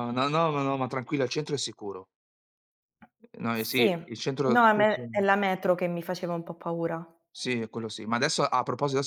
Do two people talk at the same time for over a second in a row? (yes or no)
yes